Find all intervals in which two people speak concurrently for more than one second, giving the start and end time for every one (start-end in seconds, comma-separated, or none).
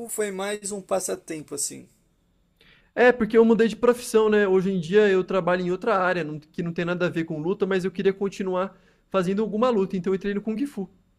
none